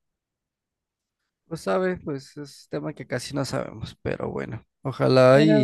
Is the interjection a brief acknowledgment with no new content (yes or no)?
yes